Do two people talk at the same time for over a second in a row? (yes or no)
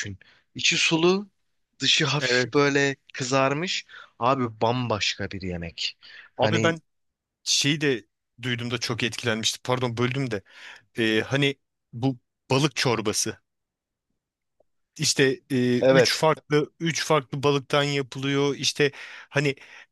no